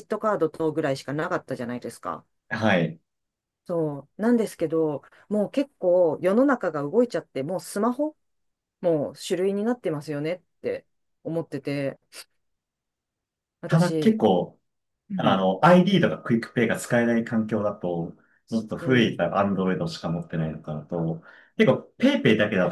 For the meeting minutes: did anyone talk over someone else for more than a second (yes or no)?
no